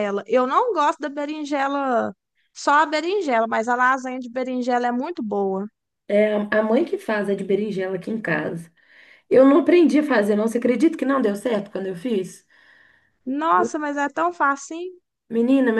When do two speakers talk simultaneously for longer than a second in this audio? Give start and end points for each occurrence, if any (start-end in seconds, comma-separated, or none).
none